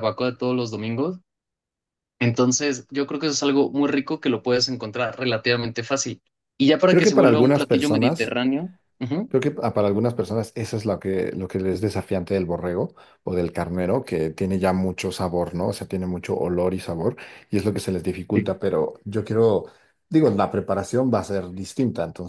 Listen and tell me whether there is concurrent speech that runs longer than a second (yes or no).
yes